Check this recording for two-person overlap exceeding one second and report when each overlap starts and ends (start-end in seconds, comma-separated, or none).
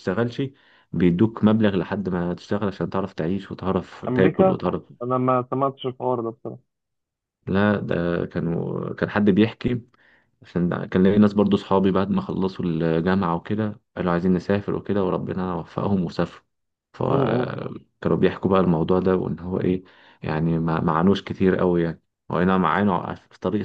none